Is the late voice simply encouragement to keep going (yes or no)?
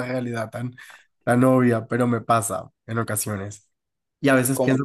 yes